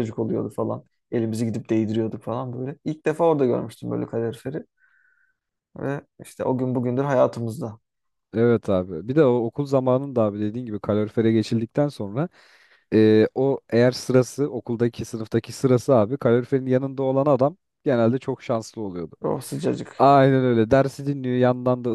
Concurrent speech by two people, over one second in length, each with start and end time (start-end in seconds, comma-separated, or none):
none